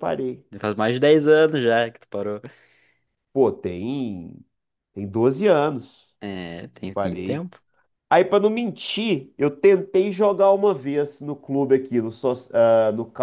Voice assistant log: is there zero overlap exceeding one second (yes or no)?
yes